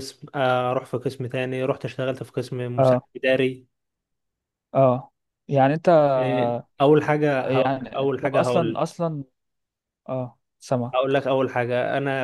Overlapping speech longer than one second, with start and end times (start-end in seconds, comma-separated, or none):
7.4-8.8